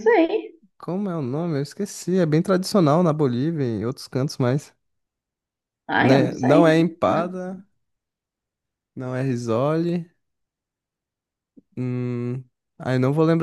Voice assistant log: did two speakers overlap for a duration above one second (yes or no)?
yes